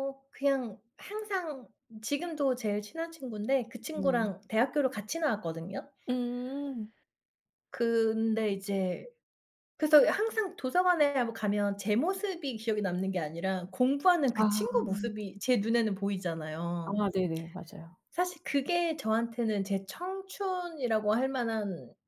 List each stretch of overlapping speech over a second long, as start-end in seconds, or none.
none